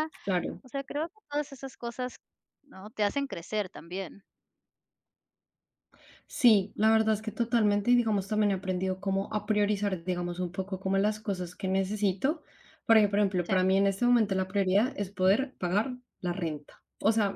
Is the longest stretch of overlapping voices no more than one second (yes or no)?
yes